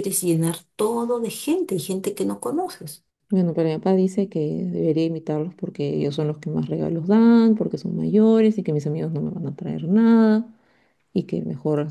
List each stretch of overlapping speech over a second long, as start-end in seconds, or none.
none